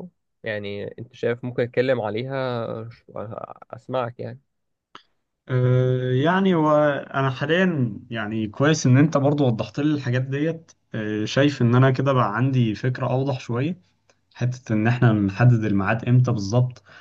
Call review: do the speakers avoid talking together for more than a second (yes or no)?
yes